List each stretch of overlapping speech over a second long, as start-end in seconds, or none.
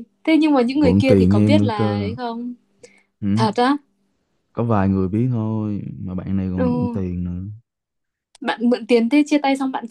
0.6-2.1